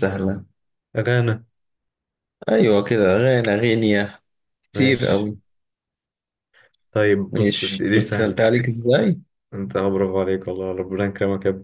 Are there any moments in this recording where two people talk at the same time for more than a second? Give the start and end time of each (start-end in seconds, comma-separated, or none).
7.3-8.6